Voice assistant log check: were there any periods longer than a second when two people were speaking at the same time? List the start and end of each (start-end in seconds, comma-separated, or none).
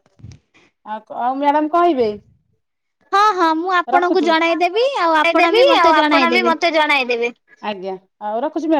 3.9-6.5